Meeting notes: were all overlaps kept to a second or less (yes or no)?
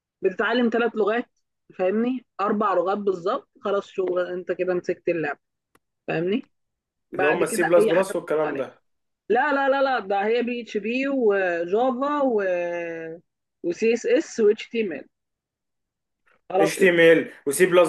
no